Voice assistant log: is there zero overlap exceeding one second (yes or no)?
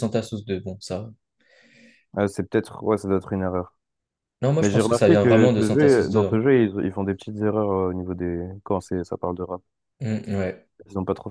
no